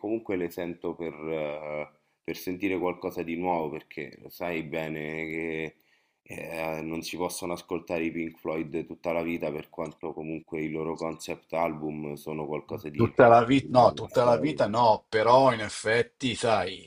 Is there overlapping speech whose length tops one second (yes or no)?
yes